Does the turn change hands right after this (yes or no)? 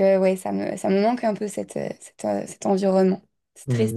yes